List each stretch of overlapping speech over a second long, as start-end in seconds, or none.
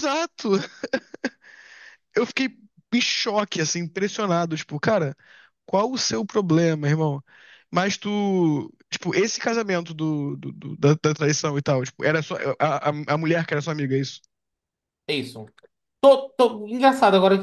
none